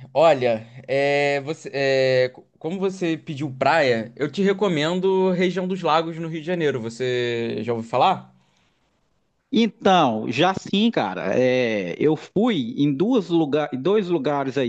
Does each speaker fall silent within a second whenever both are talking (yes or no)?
yes